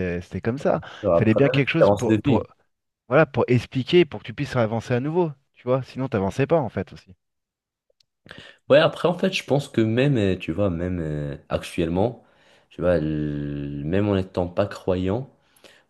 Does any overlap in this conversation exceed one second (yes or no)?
yes